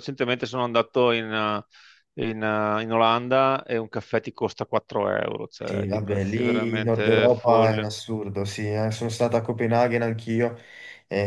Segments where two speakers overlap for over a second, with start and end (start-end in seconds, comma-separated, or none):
5.6-7.8